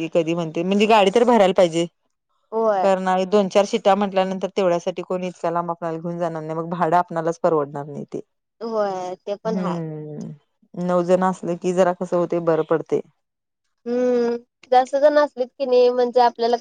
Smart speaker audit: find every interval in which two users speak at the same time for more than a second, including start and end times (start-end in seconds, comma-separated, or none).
none